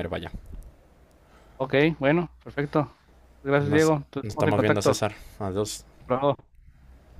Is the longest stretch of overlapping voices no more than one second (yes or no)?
no